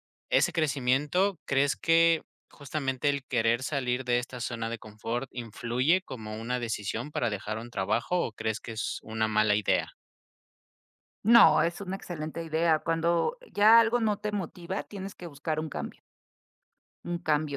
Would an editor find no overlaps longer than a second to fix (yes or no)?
yes